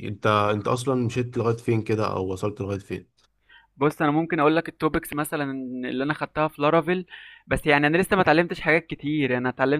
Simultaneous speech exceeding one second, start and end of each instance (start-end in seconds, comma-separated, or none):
none